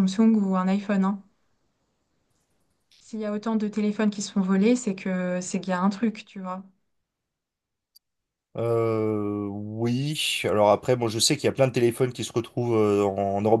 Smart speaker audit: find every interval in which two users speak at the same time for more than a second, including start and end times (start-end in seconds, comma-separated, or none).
none